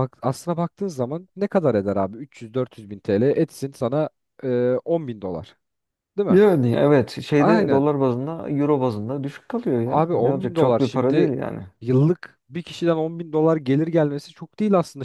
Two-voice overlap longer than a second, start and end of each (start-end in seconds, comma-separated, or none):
9.8-11.3